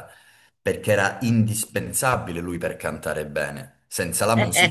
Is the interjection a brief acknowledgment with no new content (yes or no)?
yes